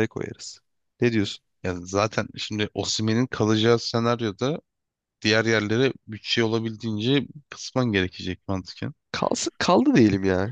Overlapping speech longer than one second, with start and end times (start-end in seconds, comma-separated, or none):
none